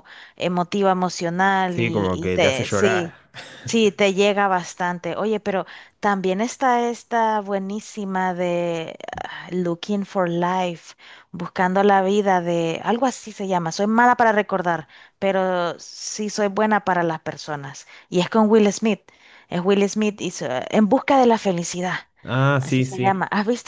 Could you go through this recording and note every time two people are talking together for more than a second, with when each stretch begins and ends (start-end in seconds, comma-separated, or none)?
1.7-3.1